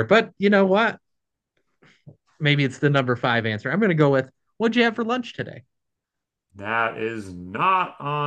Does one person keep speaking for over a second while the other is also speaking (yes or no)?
no